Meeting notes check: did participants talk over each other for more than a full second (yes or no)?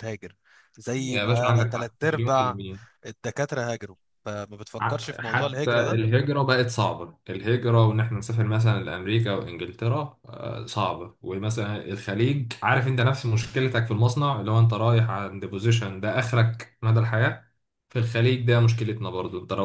yes